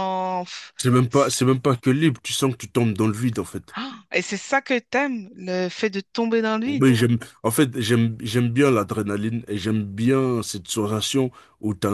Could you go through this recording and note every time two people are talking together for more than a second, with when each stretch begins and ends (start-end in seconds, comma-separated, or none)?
none